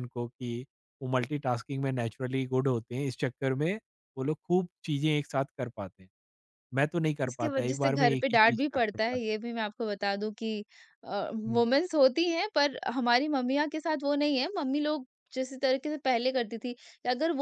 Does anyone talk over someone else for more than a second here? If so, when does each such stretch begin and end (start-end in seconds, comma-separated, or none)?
7.3-9.2